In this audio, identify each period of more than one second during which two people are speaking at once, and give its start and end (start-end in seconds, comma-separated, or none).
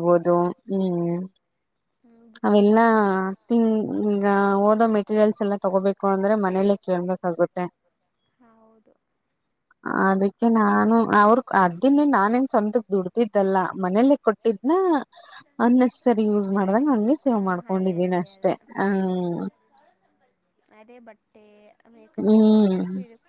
17.3-19.3